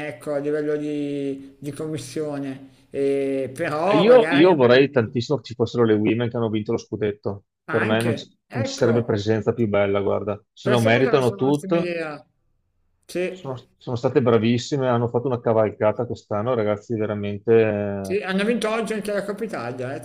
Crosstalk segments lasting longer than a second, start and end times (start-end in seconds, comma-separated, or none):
7.7-9.2, 10.6-11.9